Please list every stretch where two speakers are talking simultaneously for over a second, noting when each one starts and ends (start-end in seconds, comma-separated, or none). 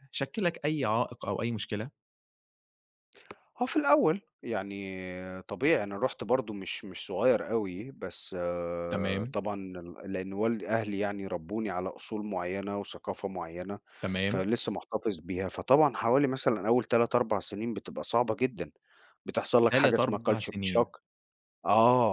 19.7-20.9